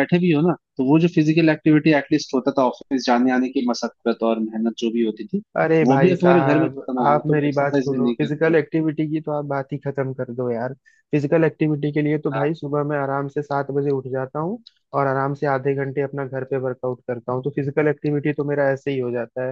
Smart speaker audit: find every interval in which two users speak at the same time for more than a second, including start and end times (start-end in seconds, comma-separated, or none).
5.9-8.5